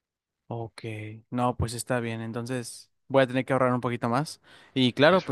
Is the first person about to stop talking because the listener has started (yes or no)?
no